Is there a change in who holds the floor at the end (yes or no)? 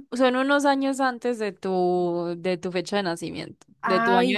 yes